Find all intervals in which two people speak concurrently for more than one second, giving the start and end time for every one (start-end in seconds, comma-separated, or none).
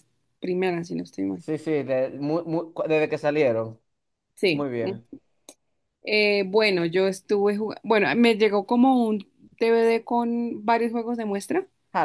none